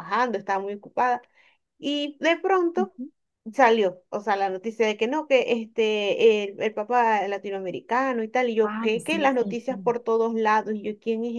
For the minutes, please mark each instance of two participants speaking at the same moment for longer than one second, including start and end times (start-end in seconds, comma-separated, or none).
8.6-9.9